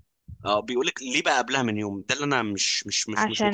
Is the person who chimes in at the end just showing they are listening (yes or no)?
no